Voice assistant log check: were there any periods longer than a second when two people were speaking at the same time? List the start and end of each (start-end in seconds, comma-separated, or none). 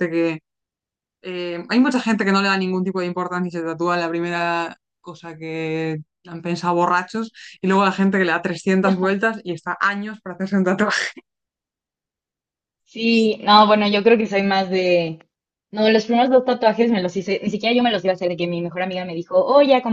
none